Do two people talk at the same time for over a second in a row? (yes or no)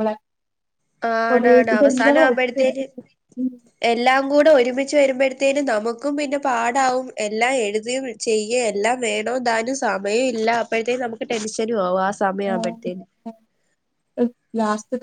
yes